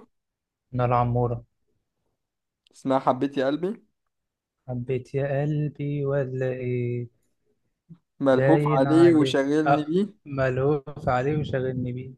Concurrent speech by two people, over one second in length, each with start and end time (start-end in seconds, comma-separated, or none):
8.3-9.8